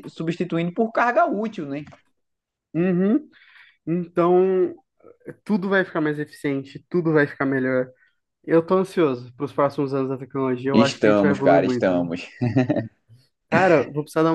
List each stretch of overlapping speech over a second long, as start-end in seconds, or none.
10.7-12.1